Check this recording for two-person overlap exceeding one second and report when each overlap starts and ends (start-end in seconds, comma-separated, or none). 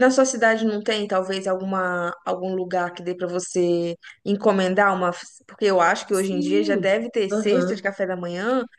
6.1-7.9